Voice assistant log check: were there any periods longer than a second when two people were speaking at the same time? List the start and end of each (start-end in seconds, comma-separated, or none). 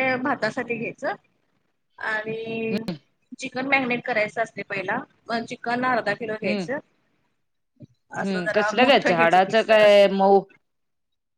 8.2-10.1